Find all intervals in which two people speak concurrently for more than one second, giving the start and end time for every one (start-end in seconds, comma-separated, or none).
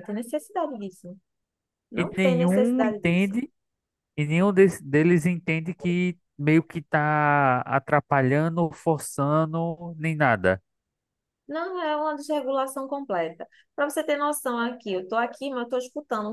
2.0-3.3